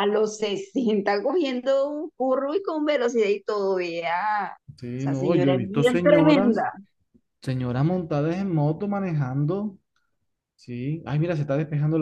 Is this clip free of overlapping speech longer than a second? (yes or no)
no